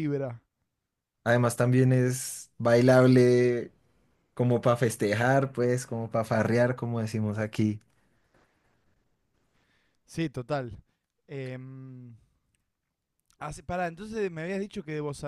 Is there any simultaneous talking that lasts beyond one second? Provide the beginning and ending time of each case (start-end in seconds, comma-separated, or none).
none